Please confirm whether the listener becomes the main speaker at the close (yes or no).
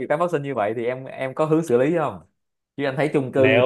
no